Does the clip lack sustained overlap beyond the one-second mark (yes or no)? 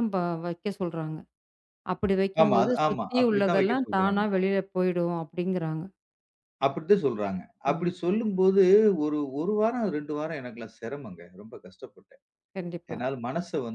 no